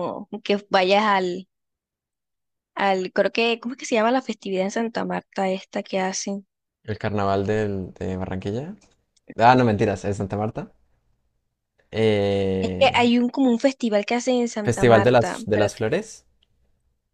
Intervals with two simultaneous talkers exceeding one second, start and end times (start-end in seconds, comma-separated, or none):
14.6-15.8